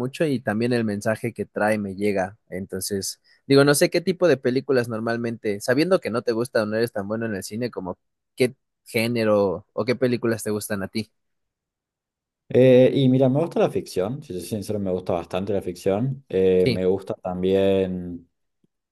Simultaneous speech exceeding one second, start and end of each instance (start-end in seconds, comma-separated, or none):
none